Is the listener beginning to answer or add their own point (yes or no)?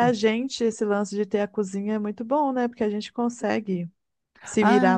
yes